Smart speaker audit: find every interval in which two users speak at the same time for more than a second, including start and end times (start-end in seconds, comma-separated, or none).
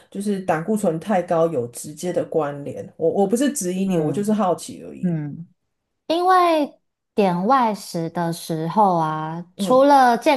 none